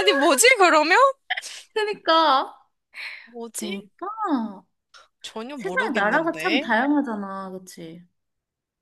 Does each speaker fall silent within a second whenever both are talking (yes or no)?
no